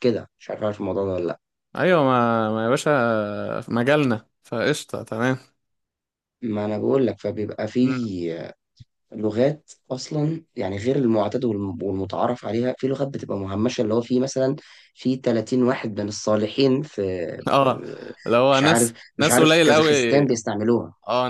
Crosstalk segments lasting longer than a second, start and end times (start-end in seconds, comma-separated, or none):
18.5-19.9